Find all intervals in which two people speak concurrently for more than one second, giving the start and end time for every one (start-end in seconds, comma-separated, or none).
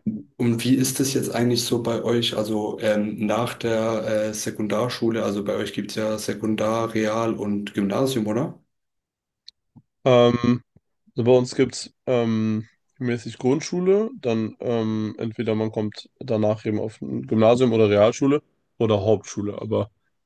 none